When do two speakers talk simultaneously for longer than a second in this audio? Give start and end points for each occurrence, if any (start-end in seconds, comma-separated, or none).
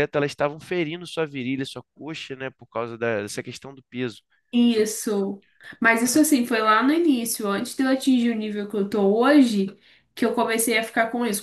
none